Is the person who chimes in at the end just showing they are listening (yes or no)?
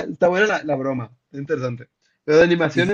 yes